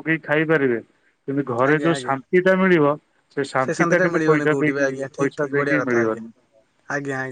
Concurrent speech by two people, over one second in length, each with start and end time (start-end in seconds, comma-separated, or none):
3.8-6.2